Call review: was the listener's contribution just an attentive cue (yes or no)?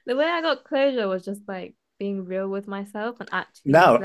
no